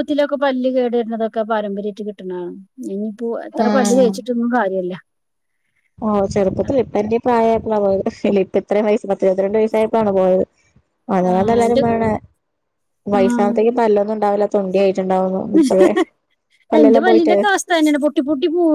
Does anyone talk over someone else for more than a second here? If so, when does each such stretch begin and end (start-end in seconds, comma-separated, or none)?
none